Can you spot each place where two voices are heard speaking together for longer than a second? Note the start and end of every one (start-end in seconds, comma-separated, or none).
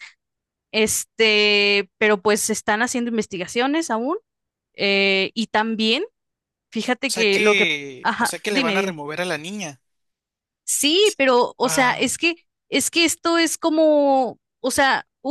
7.0-9.0